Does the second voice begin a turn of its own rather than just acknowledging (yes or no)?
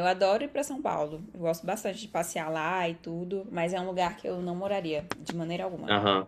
yes